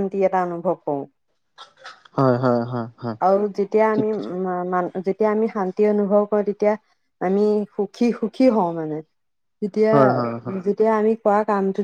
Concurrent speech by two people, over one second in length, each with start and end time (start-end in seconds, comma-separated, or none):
none